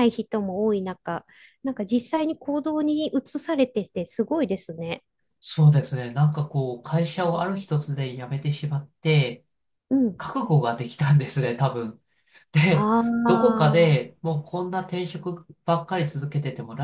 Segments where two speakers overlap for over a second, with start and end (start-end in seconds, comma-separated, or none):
12.7-14.2